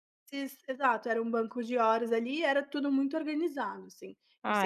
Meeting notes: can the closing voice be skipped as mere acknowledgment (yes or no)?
no